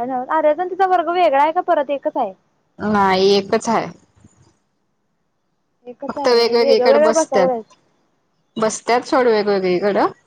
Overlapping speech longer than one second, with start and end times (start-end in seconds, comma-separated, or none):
6.1-7.6